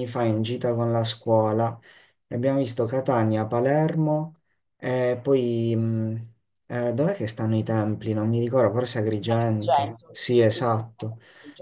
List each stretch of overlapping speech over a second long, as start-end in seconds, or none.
9.3-10.8